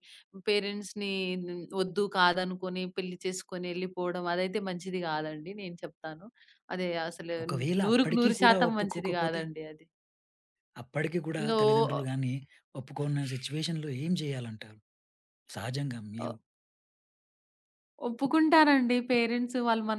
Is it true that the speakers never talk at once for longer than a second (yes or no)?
no